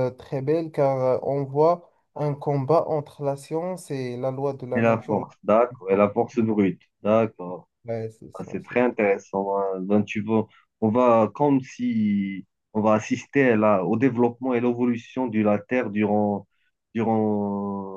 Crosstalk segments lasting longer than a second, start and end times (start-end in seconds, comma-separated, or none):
none